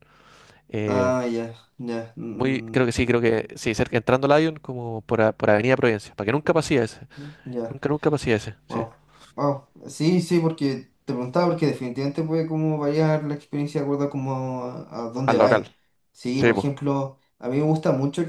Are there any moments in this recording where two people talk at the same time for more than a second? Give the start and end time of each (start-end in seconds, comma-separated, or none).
none